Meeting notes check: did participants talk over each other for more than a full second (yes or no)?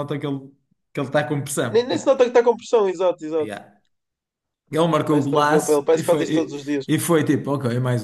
yes